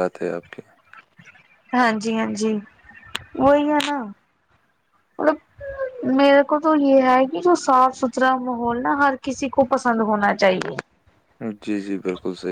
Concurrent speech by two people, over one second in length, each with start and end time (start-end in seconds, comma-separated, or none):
none